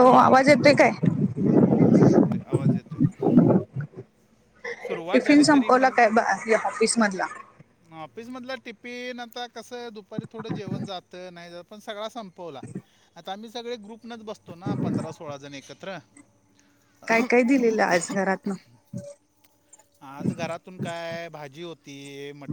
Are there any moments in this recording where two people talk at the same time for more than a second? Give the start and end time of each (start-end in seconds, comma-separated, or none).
none